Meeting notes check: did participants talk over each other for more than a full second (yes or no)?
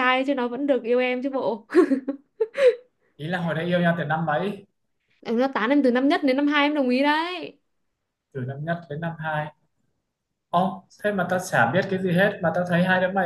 no